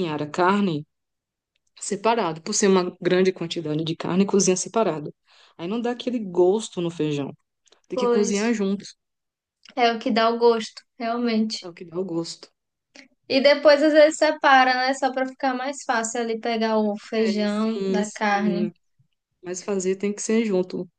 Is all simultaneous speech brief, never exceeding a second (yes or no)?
no